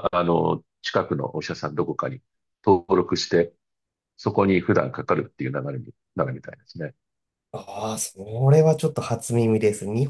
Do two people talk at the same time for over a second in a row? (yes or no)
no